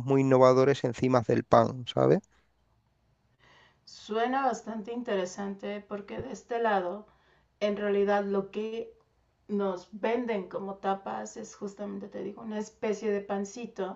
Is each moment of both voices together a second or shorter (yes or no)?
yes